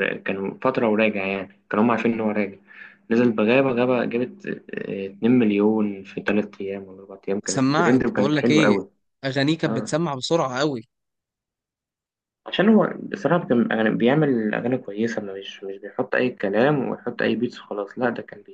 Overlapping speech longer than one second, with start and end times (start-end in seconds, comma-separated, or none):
7.5-8.8